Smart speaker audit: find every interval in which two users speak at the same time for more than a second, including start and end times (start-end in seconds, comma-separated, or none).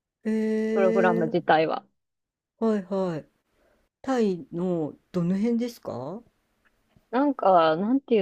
none